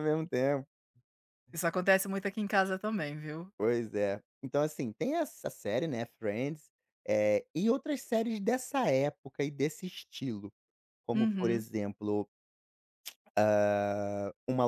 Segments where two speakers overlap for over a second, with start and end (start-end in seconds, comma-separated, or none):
none